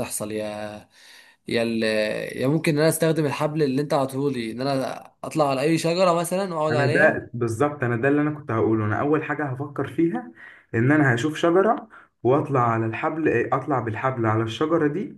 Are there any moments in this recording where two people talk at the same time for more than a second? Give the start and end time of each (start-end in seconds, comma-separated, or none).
none